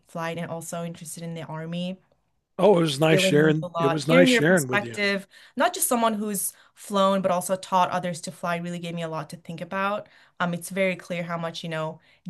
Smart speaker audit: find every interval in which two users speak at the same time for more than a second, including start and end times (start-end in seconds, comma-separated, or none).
3.1-5.0